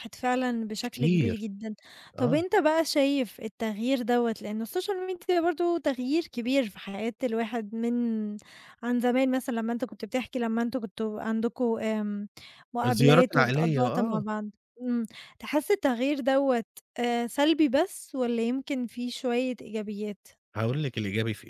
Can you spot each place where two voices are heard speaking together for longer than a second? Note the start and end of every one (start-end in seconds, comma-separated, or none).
12.8-14.2